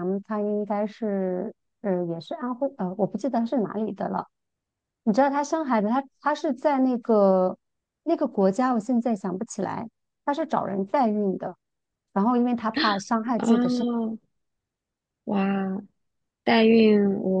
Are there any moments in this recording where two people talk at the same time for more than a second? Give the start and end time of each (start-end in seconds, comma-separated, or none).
none